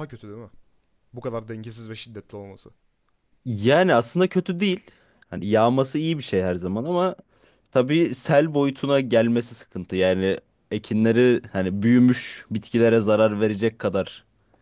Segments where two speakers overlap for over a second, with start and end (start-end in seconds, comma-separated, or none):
none